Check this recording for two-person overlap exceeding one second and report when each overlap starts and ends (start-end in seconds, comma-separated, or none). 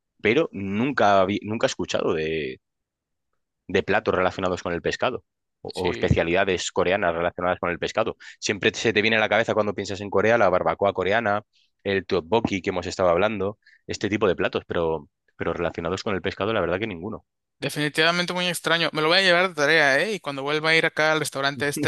none